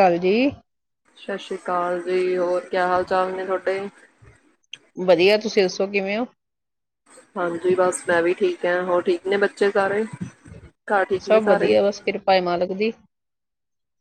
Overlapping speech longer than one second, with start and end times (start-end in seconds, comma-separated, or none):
none